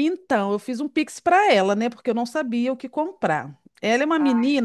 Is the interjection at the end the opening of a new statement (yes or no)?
no